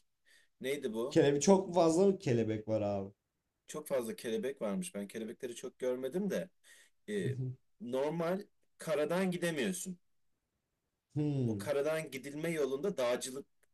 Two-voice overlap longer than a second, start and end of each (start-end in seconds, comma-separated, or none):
none